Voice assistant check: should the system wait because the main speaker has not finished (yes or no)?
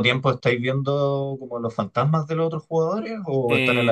no